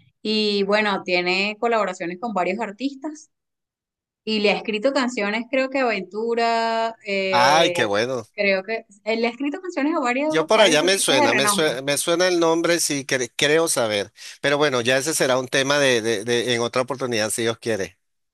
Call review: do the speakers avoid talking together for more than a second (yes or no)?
no